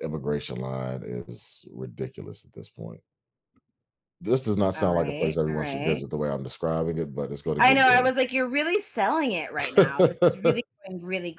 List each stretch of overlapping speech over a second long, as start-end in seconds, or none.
4.7-6.0